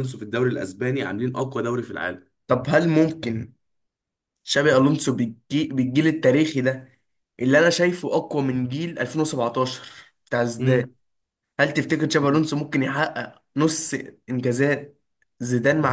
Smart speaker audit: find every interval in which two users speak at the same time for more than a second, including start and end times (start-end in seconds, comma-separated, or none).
none